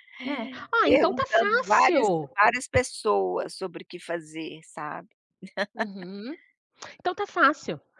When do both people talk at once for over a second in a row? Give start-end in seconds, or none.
0.8-2.4